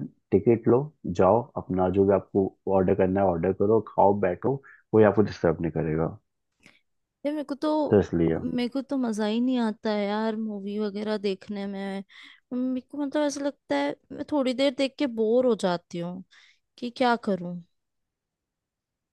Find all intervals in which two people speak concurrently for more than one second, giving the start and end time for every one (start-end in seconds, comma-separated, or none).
none